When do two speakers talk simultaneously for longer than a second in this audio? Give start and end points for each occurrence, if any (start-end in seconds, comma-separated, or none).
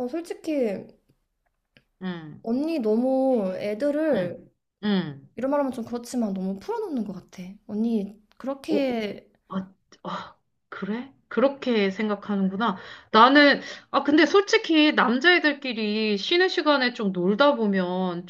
none